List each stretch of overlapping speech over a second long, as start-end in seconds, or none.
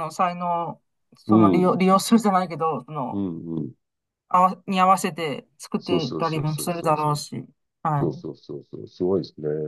5.8-7.2